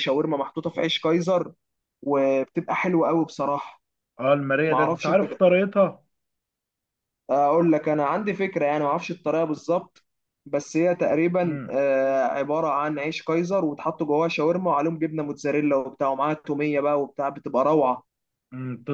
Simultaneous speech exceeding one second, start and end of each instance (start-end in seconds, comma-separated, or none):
none